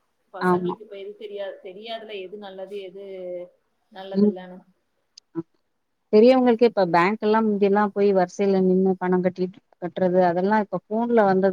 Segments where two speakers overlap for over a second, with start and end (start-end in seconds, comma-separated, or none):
none